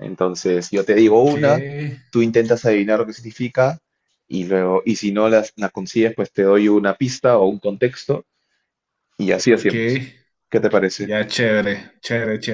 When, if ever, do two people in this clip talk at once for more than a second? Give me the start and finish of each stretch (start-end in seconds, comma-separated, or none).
none